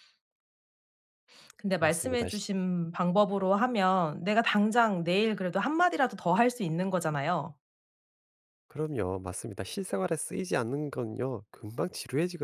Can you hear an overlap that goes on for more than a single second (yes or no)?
no